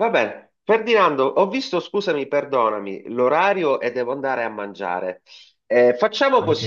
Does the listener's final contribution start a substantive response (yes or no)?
no